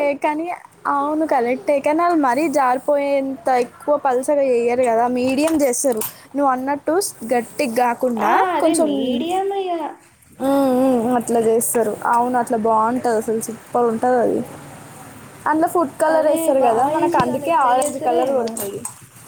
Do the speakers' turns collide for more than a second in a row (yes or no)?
yes